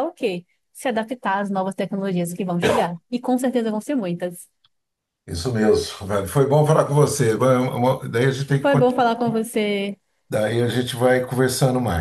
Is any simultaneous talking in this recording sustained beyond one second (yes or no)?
no